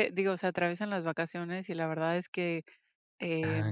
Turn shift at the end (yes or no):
no